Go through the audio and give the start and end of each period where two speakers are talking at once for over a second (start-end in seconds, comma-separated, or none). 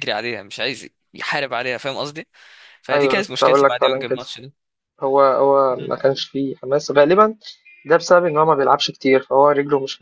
2.9-4.2